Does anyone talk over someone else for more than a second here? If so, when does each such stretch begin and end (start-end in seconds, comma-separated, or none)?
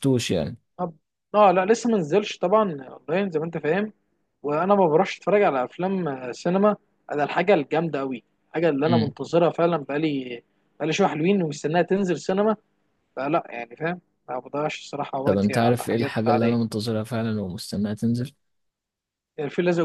15.2-16.6